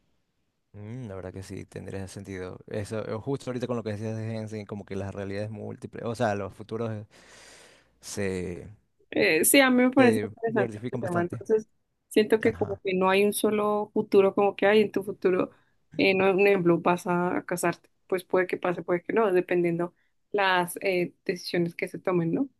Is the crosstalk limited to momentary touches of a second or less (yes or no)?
no